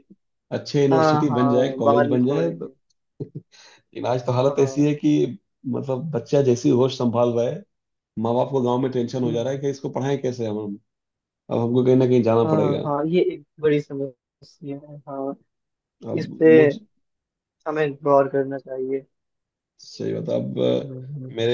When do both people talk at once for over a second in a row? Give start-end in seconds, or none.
0.9-2.7